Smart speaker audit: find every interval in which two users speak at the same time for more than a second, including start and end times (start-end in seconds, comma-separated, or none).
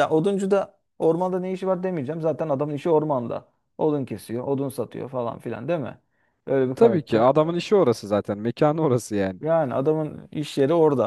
none